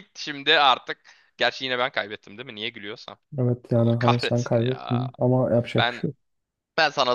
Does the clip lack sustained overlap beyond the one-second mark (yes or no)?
no